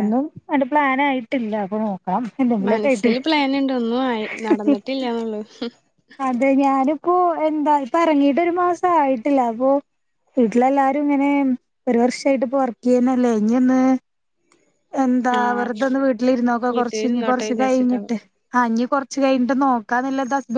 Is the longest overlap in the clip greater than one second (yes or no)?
yes